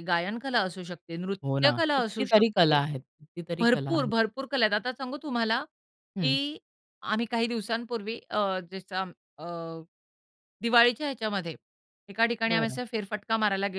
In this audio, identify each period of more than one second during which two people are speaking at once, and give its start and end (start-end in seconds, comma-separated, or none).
1.4-2.8